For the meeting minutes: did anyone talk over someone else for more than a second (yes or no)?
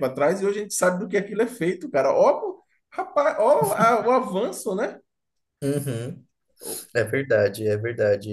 no